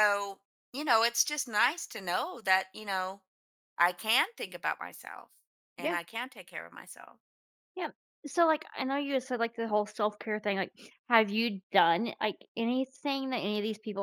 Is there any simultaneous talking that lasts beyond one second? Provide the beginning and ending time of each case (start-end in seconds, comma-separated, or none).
none